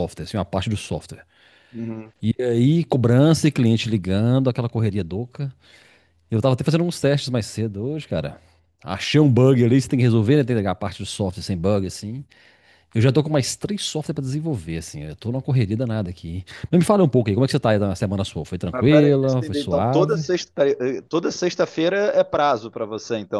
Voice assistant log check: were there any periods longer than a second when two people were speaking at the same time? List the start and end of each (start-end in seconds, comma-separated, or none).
18.7-20.2